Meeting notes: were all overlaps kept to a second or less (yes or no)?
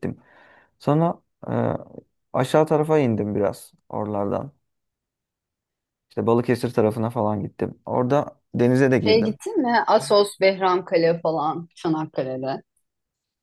yes